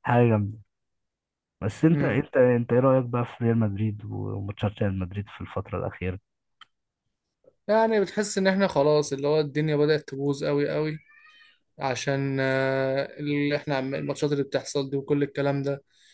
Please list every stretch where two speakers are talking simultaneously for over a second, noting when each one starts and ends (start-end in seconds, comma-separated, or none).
none